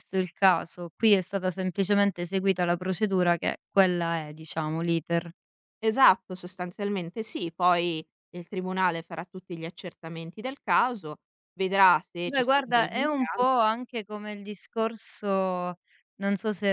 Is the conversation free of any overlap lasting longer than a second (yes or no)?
no